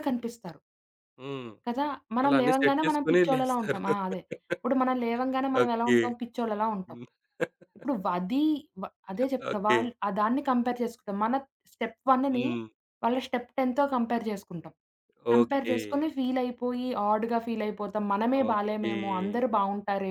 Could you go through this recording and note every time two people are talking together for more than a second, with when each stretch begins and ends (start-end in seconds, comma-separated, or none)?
2.2-3.8